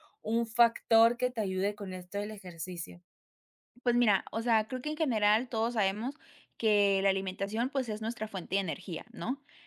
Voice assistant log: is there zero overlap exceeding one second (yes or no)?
yes